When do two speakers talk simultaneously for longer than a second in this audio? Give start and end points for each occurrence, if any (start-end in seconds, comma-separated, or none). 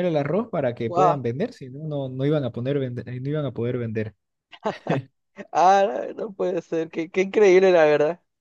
none